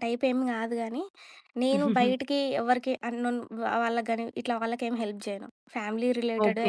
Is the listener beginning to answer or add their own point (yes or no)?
yes